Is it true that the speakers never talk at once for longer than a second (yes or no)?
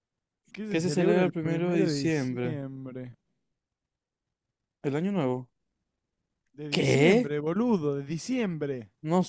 no